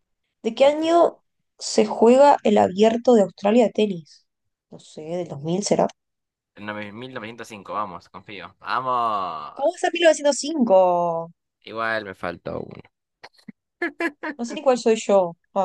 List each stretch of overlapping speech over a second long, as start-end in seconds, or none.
none